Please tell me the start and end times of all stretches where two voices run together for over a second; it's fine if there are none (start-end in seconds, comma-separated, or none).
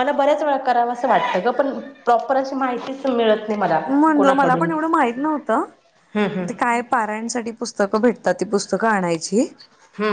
none